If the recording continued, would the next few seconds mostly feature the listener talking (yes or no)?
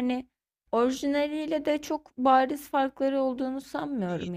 yes